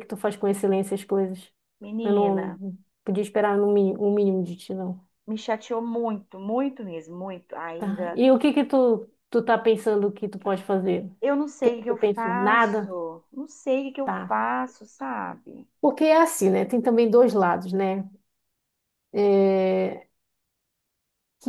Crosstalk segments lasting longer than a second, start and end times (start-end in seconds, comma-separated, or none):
11.6-12.9